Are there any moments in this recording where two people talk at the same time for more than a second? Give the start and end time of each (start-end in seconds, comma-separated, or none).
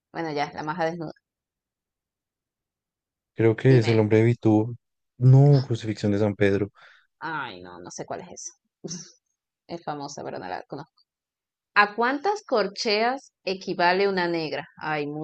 none